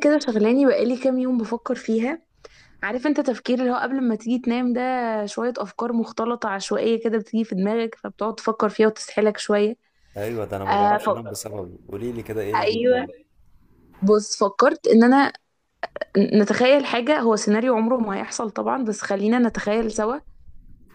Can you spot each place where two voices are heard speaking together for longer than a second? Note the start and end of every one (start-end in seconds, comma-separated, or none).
none